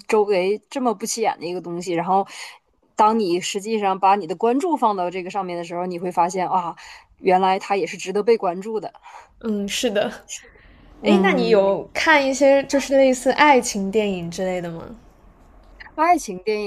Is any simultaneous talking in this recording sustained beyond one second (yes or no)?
no